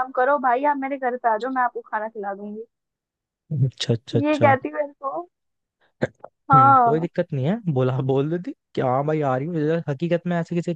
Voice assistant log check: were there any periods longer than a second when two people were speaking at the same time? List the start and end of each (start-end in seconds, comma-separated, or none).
none